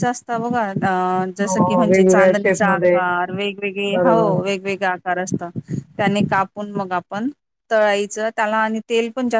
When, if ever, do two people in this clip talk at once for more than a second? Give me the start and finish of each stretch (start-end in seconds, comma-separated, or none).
1.4-3.0